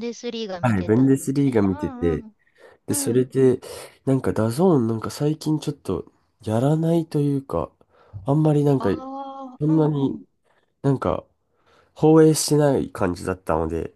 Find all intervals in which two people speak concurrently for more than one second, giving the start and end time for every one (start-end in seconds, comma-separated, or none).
0.6-2.2